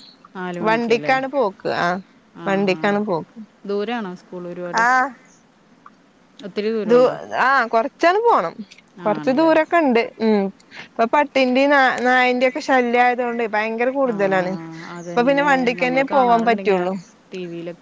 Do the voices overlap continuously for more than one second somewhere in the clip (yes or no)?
yes